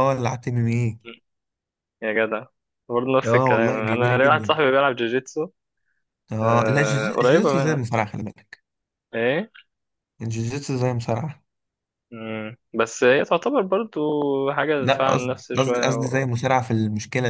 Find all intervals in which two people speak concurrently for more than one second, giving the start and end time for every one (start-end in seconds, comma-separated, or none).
3.2-4.5, 6.4-7.9, 14.8-16.3